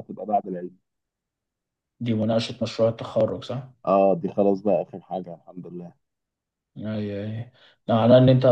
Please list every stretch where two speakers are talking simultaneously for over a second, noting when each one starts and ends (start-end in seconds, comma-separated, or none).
none